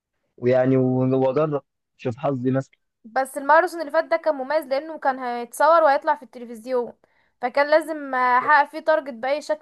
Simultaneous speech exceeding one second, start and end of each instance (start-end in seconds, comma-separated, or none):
none